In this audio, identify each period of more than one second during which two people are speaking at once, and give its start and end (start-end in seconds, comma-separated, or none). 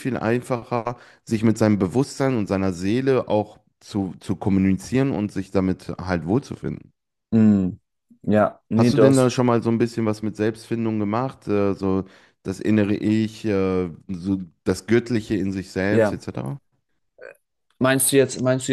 none